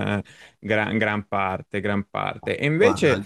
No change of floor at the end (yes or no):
yes